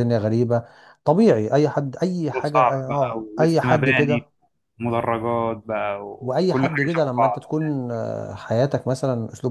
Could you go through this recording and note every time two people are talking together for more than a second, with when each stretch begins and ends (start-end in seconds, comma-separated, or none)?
2.3-4.3, 6.2-7.5